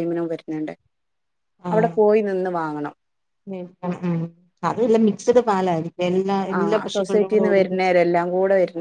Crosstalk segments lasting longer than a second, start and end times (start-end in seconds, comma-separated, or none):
6.6-7.9